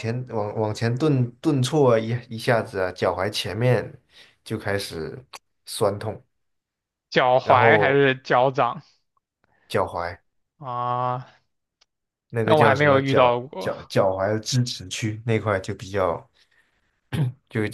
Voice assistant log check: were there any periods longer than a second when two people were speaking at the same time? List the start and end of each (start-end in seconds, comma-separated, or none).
12.4-13.7